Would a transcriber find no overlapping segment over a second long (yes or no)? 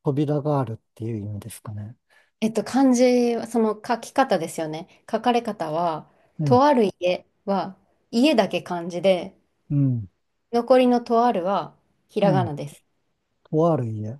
yes